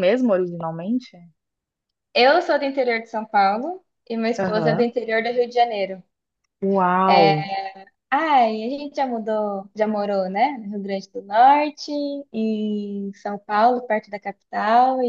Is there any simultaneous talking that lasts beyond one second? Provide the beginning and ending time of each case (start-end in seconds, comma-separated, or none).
none